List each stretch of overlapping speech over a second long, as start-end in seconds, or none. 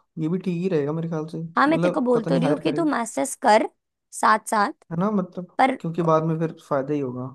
1.6-2.8